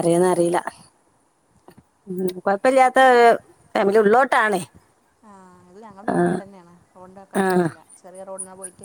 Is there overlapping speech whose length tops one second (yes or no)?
no